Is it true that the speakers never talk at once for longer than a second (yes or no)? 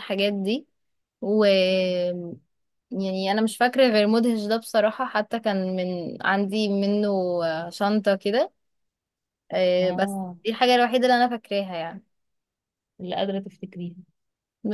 yes